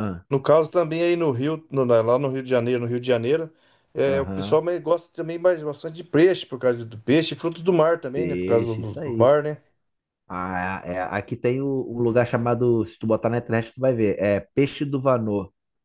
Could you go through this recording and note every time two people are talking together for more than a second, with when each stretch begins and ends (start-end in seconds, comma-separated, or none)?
8.1-9.3